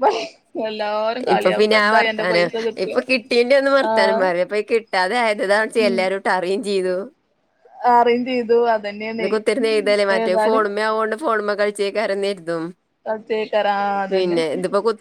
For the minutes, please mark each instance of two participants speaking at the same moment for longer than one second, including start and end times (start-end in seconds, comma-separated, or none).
none